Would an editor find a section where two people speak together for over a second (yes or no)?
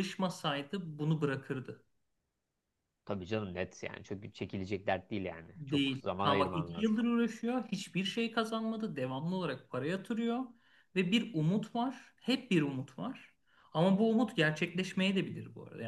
yes